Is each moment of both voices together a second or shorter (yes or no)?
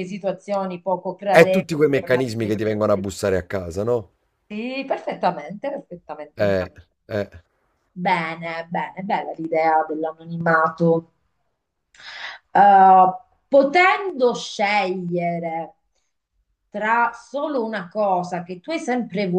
no